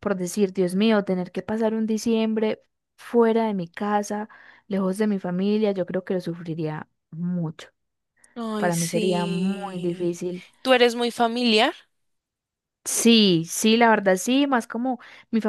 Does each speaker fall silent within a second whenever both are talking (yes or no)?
no